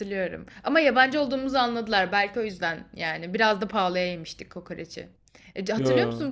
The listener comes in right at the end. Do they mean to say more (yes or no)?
no